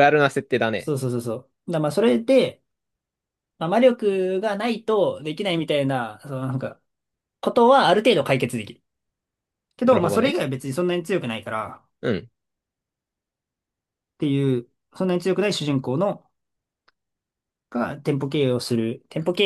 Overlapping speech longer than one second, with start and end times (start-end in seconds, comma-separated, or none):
none